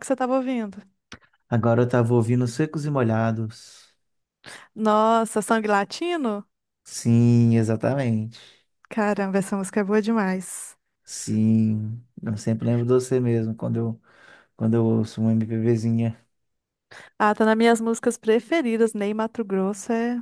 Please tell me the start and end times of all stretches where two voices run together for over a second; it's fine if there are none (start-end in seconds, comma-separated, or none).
none